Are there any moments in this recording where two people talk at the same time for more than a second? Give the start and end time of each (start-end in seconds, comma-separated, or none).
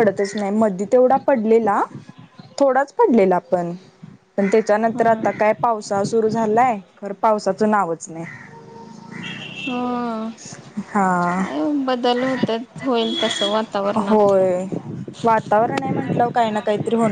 none